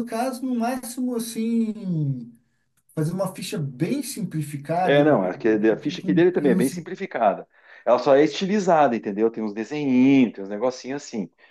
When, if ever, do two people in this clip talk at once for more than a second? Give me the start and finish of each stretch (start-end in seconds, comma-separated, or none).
4.8-6.9